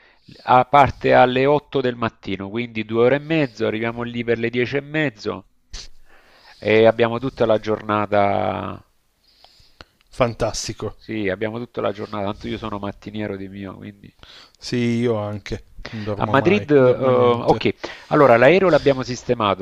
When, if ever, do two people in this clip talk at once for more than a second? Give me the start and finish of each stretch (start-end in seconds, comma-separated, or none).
16.1-17.7